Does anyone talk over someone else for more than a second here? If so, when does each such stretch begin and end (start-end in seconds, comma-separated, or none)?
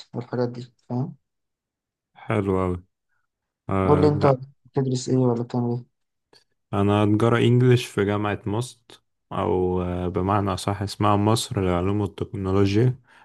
none